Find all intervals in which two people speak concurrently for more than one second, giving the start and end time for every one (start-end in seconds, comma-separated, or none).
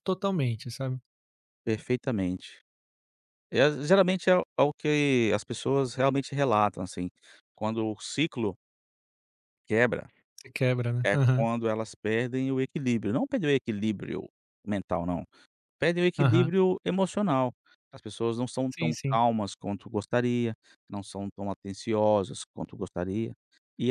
none